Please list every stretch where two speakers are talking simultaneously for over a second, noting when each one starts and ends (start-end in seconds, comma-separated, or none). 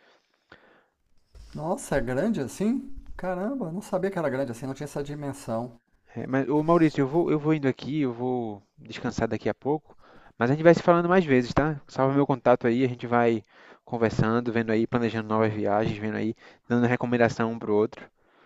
none